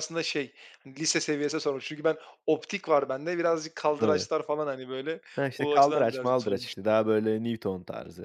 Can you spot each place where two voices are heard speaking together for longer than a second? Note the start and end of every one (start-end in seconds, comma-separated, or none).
5.6-7.0